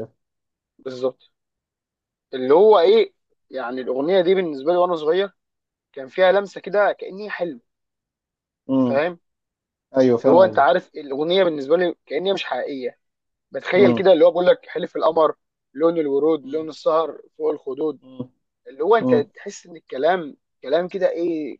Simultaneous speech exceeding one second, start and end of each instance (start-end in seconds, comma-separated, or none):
none